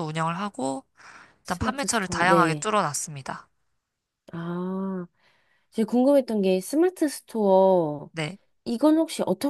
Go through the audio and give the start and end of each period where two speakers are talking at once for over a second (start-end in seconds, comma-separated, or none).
1.4-2.7